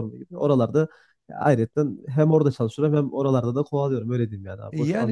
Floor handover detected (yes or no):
yes